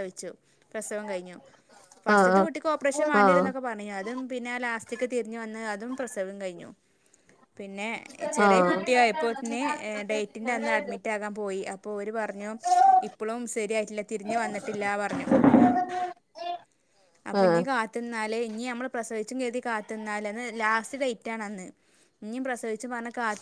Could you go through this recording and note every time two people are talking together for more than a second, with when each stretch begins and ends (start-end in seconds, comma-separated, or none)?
2.1-3.4